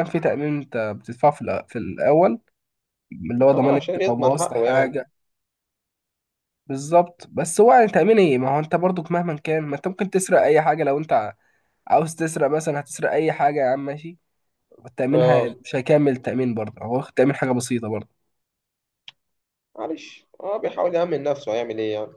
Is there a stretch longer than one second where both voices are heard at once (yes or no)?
yes